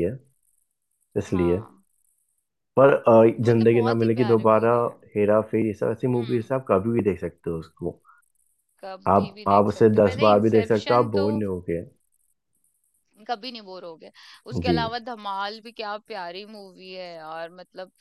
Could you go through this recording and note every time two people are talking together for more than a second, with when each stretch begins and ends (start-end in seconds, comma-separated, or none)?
3.5-4.7, 9.1-11.2